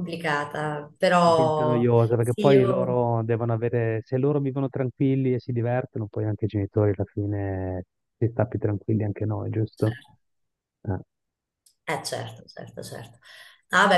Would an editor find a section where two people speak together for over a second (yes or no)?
yes